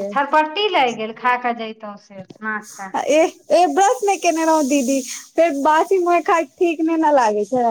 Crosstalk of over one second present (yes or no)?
no